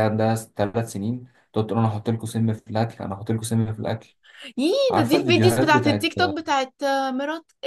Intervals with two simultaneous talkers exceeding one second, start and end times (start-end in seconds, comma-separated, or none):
4.9-6.1